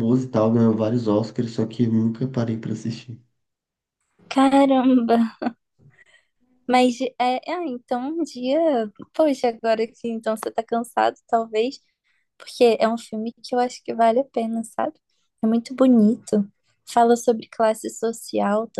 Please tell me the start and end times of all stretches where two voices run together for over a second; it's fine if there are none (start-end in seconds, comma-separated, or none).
none